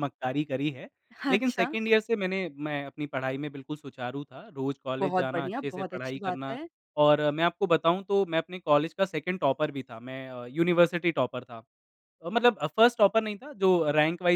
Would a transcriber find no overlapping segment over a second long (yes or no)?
no